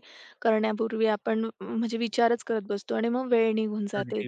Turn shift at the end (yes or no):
yes